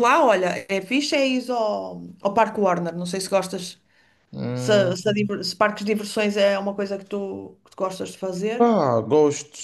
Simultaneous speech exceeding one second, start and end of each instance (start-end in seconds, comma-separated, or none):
none